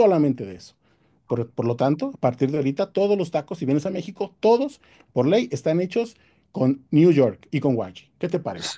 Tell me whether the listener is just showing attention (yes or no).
no